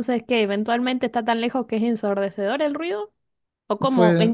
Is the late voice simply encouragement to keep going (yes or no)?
yes